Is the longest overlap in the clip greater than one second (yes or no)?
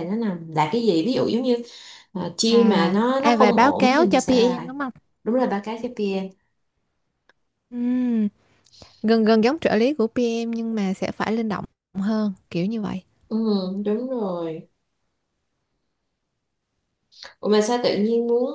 yes